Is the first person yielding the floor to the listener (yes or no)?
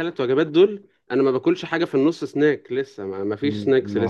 yes